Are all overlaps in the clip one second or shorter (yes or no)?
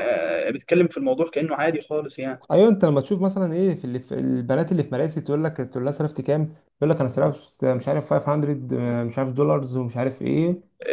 yes